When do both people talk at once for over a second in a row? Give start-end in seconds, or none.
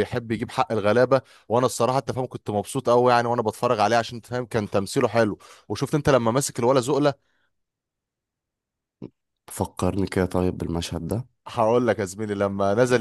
none